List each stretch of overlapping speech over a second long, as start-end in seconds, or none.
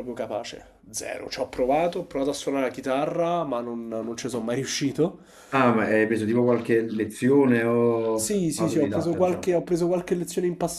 8.1-9.5